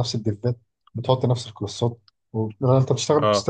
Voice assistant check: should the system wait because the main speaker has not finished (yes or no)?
yes